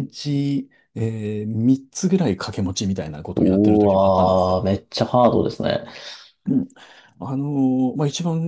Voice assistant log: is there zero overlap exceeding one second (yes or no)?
no